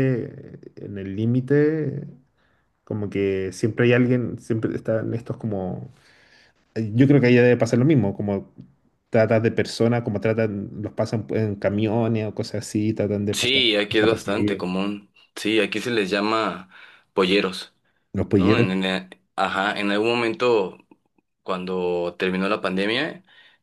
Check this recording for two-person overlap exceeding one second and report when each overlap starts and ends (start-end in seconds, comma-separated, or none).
13.3-14.6